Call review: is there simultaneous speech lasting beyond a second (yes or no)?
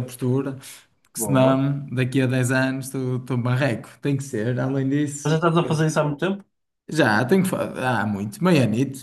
no